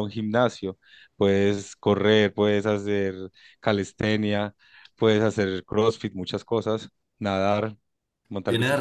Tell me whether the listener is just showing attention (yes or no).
no